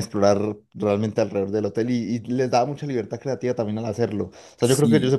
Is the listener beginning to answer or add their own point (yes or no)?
no